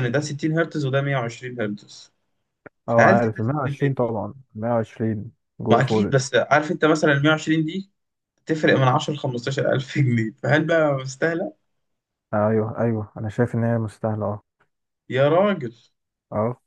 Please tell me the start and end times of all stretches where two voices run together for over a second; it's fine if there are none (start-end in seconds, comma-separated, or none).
2.9-4.2